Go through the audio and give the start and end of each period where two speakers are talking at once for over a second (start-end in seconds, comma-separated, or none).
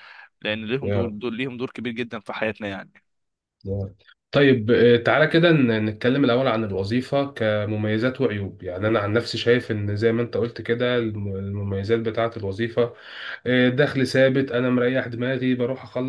none